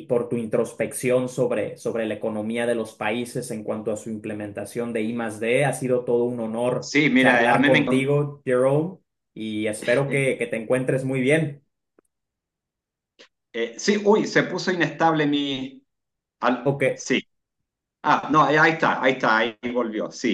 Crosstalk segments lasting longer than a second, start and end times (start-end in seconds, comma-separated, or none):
6.8-8.1